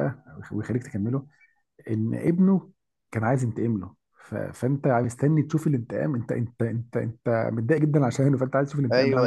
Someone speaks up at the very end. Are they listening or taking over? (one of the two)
taking over